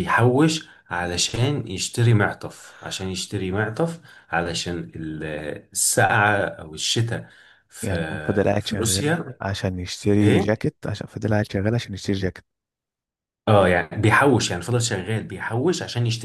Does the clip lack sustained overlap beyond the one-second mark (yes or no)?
no